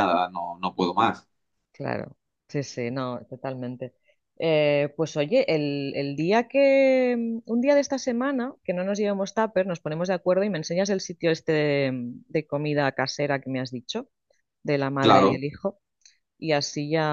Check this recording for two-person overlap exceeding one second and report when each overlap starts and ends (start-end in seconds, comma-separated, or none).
none